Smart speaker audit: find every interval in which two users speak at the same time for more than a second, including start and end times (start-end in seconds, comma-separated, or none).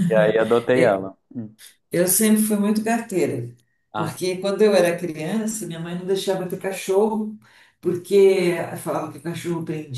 none